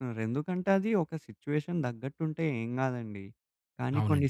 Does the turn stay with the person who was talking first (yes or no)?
yes